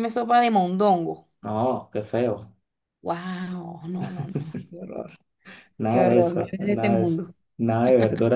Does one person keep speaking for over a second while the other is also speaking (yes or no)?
yes